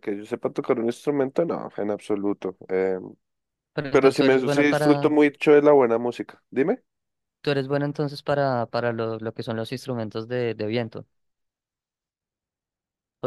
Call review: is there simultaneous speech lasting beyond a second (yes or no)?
yes